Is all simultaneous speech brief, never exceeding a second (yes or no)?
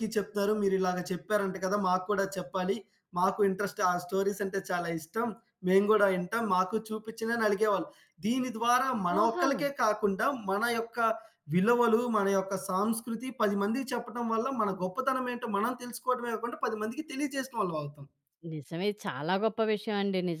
yes